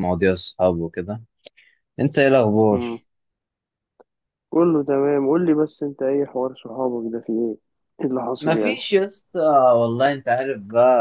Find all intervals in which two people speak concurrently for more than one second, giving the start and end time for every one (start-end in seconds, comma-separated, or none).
none